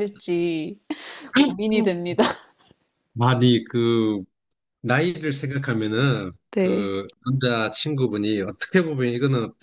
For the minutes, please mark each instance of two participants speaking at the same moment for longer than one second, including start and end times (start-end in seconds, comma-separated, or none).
none